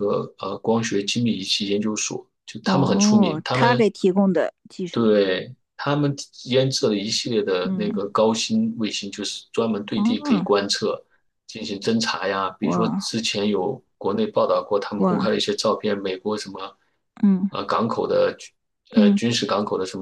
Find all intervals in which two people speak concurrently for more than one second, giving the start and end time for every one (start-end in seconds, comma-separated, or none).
2.6-3.9